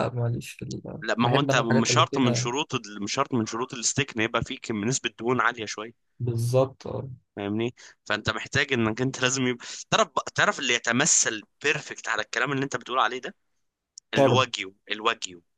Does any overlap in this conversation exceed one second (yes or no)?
yes